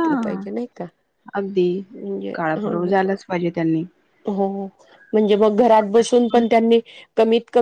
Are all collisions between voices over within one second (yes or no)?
yes